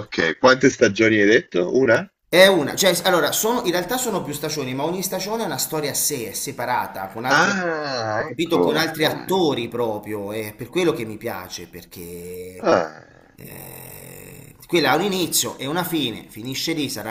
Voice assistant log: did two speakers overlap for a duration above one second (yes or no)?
yes